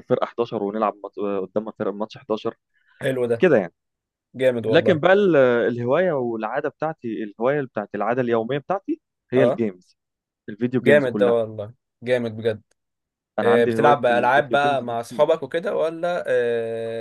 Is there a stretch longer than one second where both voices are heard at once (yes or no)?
yes